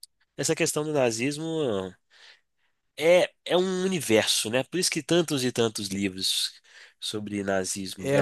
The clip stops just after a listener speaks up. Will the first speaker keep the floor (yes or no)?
no